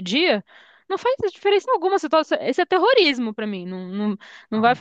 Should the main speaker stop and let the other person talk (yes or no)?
yes